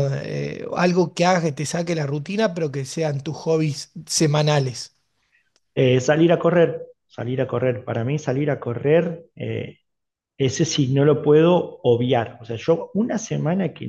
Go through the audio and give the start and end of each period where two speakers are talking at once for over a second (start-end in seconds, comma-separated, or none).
none